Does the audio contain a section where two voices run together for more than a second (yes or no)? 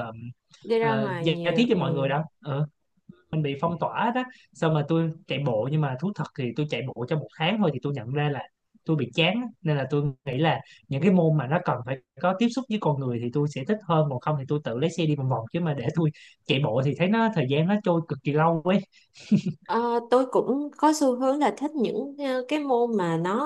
yes